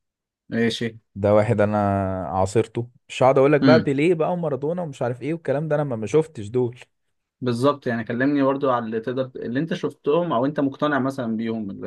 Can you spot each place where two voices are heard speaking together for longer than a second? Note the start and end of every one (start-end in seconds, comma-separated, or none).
none